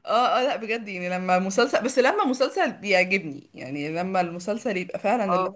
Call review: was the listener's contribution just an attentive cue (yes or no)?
yes